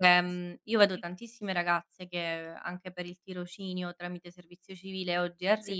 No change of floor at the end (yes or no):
yes